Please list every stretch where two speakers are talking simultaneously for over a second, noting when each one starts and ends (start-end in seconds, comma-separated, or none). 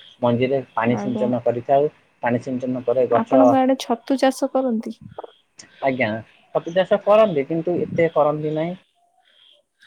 none